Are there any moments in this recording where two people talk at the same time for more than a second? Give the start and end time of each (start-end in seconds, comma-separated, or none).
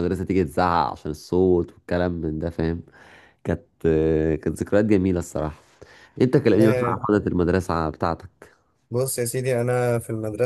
none